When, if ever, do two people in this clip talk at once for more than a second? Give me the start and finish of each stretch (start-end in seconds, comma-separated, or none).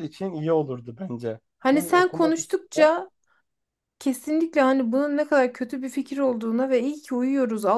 1.6-2.9